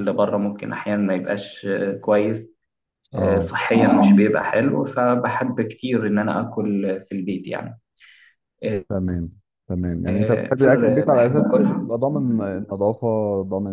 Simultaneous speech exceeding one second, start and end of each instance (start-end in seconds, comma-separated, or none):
10.1-11.9